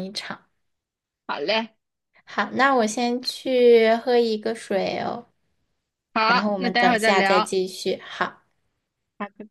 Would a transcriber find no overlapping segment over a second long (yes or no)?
no